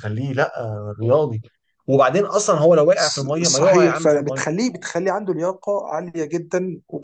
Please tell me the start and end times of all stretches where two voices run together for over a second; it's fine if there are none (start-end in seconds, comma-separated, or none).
3.0-4.4